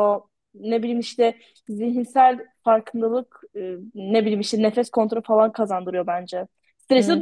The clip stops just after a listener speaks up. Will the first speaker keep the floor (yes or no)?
no